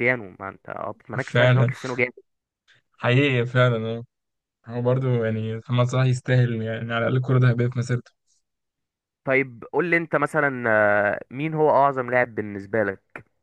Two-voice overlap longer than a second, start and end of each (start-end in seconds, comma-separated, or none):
none